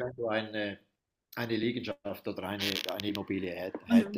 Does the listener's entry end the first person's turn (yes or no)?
yes